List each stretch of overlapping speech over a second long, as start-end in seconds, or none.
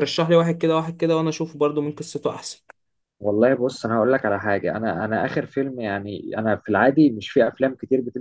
none